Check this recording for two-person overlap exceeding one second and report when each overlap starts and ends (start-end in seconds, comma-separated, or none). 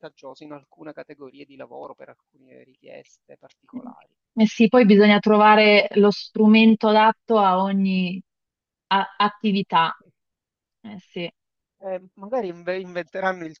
none